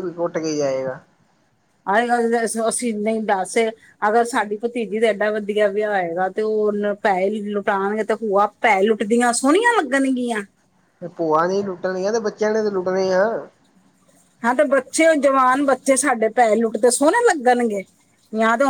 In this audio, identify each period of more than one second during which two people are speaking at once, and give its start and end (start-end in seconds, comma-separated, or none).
none